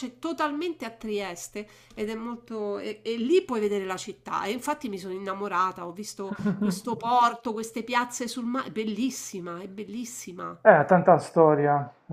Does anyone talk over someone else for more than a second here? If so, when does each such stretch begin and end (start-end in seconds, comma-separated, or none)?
none